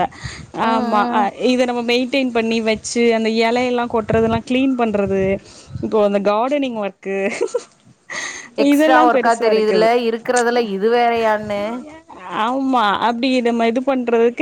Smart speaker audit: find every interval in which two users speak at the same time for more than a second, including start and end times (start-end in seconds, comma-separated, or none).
none